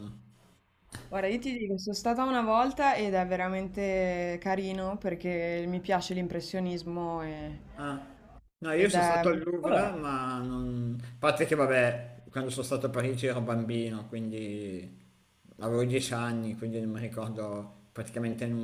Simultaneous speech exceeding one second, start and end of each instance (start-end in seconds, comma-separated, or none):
8.8-10.2